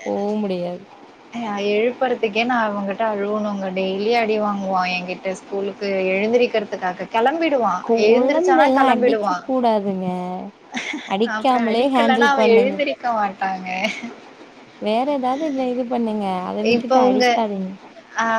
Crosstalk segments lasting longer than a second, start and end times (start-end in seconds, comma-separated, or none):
7.9-9.5, 11.3-12.7